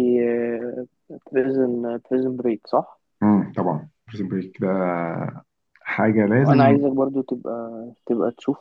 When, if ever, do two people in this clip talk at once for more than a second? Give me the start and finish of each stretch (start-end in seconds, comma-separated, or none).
none